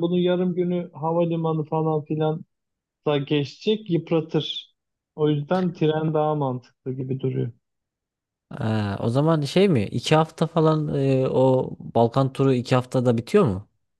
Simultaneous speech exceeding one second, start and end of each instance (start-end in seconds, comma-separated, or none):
none